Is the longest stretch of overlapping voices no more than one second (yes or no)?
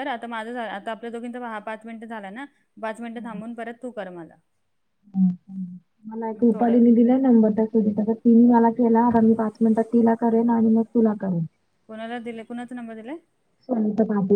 yes